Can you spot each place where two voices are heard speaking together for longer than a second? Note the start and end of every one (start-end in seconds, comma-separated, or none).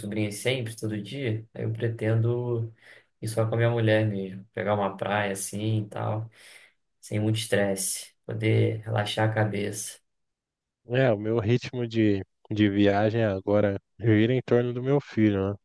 none